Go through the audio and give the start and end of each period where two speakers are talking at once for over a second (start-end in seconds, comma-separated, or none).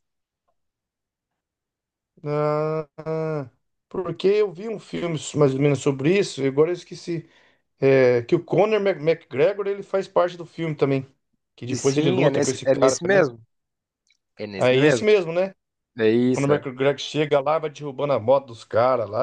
11.7-13.3